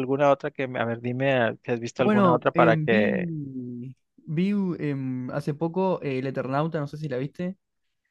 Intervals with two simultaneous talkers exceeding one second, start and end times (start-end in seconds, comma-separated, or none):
1.9-3.3